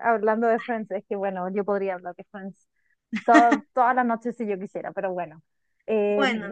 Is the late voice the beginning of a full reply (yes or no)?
no